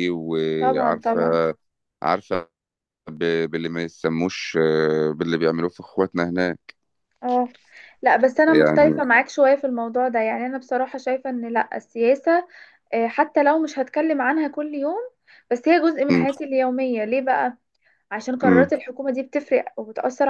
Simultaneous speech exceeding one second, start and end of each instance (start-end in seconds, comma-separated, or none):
none